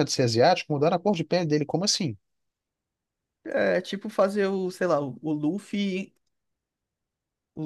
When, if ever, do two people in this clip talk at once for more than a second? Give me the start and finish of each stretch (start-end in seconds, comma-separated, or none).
none